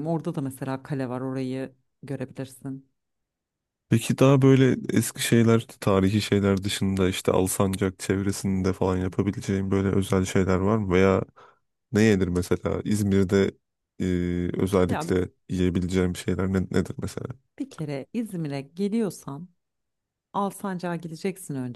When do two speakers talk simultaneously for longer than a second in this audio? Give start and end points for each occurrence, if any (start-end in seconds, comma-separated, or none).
none